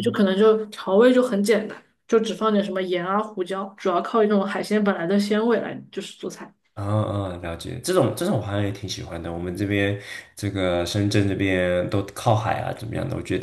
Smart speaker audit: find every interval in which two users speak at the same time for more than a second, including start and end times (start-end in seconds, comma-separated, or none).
none